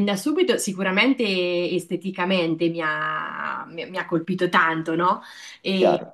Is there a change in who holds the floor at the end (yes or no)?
no